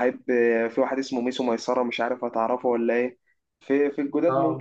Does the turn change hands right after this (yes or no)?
no